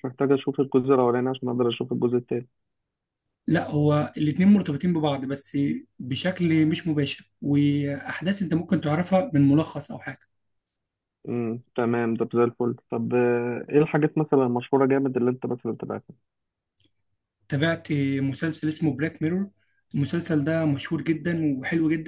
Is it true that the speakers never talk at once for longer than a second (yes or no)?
yes